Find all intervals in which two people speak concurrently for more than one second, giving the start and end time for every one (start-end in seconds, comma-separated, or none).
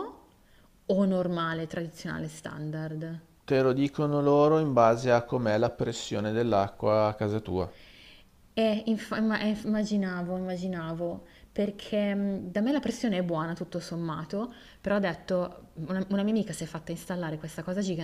none